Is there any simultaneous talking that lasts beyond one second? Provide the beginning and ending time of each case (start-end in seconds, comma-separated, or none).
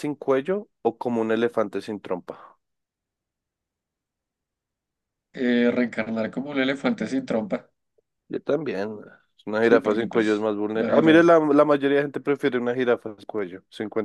9.6-11.3